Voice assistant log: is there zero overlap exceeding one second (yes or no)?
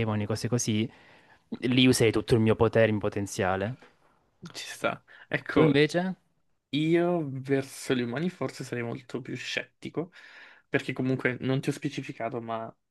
yes